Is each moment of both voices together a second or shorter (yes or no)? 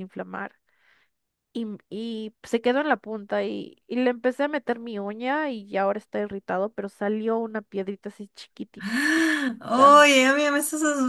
yes